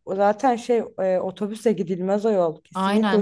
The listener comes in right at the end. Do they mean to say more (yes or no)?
yes